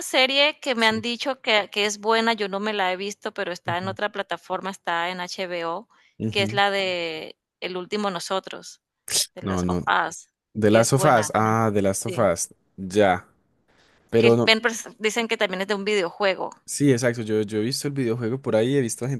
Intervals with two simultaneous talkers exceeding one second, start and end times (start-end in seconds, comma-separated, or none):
10.7-12.3